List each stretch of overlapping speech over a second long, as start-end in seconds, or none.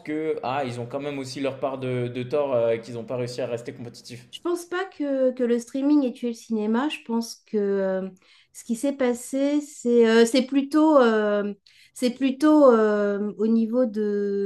none